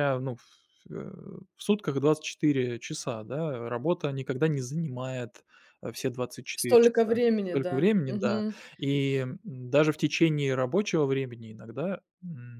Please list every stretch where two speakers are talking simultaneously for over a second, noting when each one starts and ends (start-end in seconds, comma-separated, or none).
6.5-8.4